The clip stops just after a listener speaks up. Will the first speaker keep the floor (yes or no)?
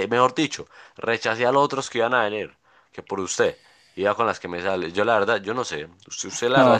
no